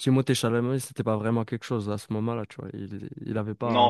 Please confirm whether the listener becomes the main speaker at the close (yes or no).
yes